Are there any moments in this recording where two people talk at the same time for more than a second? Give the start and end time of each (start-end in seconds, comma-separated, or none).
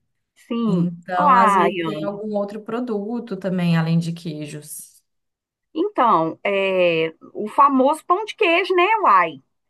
0.7-2.2